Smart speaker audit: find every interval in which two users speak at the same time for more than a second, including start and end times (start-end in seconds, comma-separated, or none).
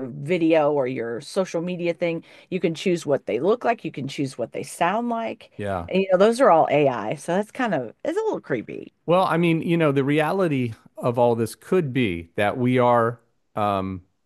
none